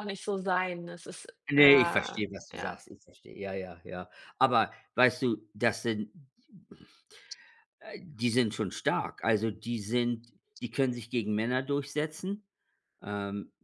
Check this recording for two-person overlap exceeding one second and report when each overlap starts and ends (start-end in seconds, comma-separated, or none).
1.5-2.8